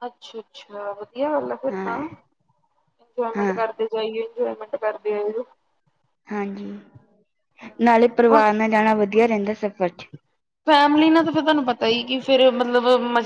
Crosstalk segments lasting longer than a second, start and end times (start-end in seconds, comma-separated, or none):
none